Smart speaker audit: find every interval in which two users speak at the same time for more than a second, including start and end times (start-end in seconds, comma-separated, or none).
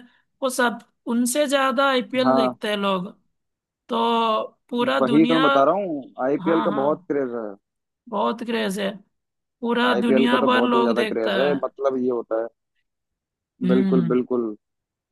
9.9-11.5